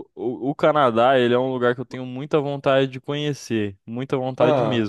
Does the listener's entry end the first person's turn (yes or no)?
no